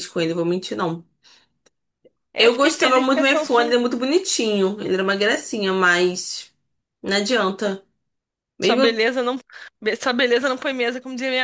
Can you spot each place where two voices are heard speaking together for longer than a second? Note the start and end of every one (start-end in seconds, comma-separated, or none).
2.4-3.7